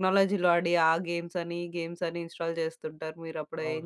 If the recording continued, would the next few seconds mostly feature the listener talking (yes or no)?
yes